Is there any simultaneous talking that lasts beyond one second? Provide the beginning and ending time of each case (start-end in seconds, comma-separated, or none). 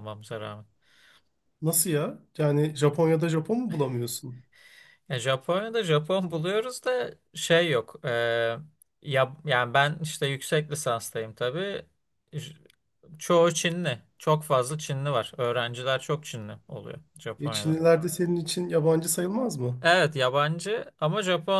none